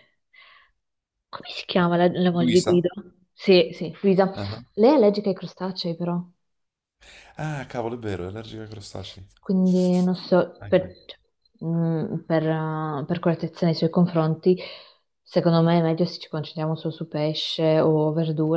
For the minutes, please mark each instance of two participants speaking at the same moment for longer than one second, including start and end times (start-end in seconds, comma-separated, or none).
none